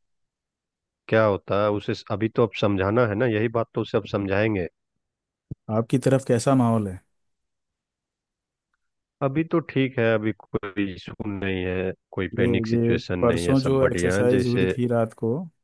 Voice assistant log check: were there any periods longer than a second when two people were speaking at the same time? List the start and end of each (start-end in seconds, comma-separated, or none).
12.4-14.7